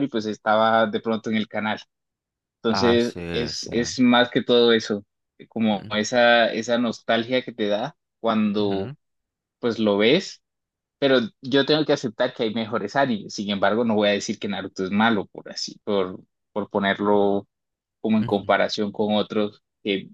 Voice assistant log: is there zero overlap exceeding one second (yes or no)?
no